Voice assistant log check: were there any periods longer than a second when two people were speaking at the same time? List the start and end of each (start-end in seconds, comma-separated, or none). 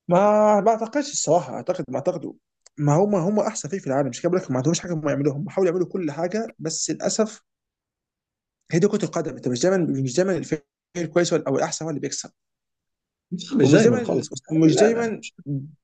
13.6-15.2